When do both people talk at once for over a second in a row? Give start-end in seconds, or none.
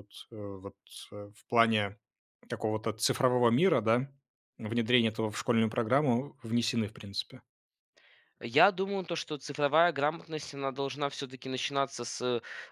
none